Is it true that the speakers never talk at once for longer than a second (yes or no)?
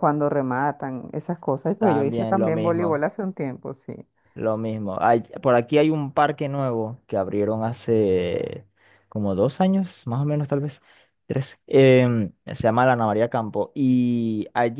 no